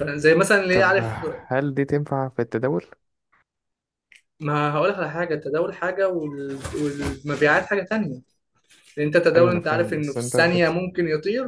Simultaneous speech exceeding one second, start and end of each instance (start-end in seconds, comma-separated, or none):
9.3-10.8